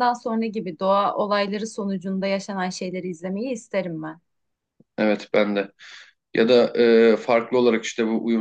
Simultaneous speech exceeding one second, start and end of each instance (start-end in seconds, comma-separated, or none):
none